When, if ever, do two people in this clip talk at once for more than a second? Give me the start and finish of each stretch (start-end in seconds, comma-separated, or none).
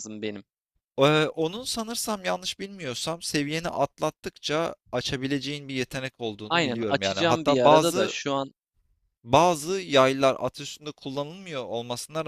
6.5-8.2